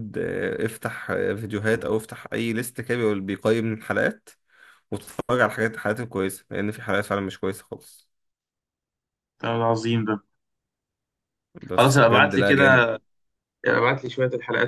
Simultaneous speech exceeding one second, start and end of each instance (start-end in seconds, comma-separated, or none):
11.7-13.0